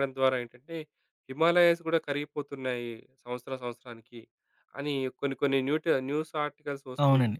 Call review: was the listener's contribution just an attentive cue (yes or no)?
yes